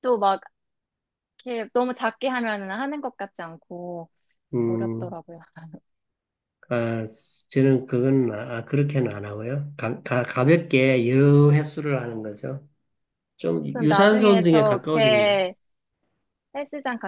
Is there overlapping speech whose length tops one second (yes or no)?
yes